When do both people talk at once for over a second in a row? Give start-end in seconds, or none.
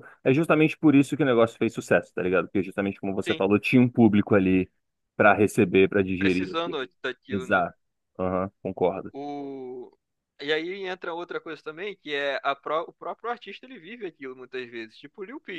none